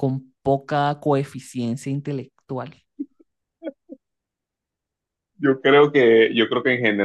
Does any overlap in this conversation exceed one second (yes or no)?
no